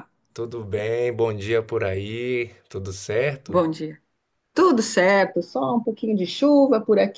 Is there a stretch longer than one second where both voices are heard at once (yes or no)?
no